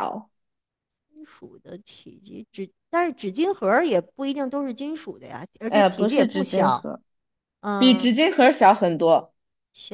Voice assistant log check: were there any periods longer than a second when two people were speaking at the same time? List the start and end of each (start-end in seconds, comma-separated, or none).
5.7-6.9